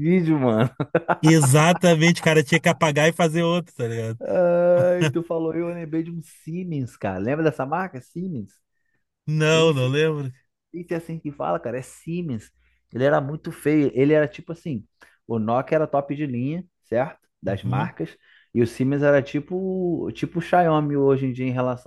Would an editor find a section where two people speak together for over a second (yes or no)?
no